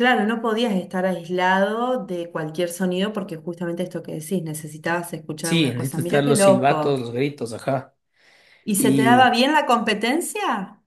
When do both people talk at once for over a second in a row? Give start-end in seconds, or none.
5.4-7.0